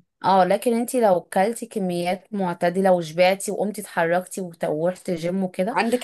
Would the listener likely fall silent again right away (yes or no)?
no